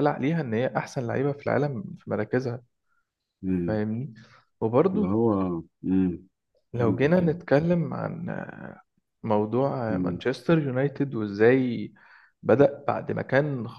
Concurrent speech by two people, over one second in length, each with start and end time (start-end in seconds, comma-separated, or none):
none